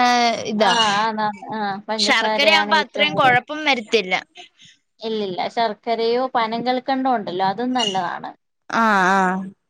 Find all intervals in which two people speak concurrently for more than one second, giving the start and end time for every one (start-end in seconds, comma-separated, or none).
2.0-3.4